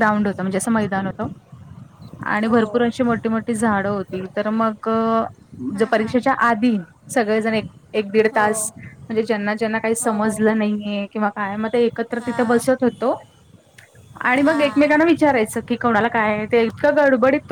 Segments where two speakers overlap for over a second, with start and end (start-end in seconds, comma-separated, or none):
none